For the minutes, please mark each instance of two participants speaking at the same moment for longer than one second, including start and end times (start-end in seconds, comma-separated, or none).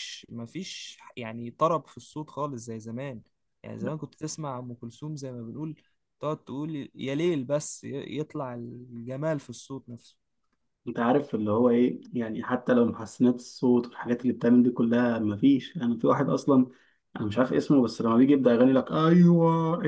none